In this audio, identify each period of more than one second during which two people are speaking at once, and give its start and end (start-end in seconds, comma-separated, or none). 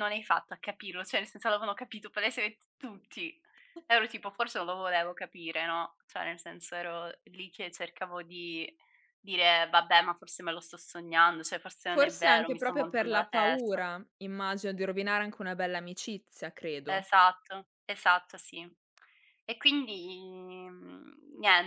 11.9-13.8